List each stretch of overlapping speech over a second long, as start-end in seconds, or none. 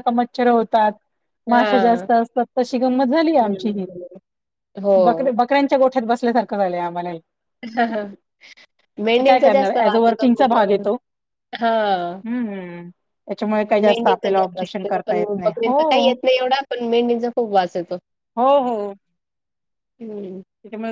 9.3-10.7, 13.8-16.1